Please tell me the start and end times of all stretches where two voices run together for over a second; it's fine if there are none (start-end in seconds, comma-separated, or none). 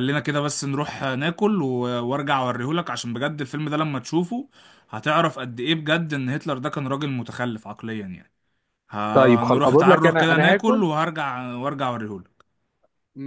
9.1-10.9